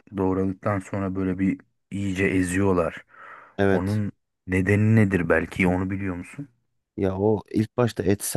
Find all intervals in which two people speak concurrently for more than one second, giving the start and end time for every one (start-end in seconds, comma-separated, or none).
none